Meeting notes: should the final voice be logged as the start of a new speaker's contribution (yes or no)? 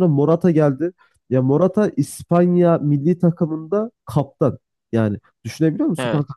no